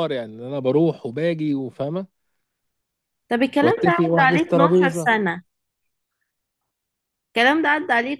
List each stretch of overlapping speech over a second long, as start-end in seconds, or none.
3.6-5.1